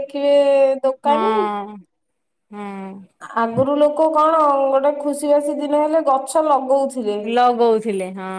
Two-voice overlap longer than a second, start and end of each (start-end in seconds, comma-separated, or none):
none